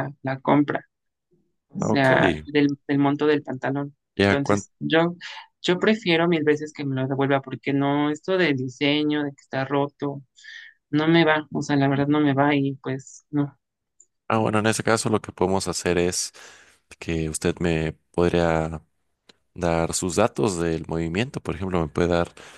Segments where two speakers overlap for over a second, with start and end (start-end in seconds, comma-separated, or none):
none